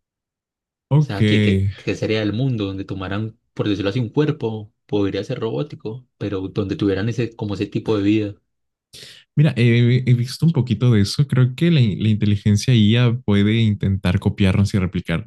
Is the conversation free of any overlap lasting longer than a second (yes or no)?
yes